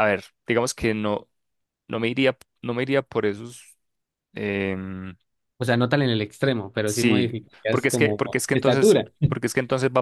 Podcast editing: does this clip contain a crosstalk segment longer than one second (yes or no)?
yes